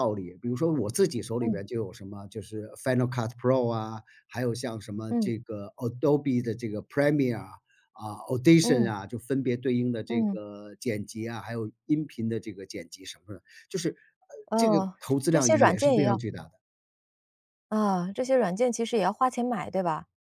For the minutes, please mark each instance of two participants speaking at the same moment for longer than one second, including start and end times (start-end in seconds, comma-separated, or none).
14.6-16.2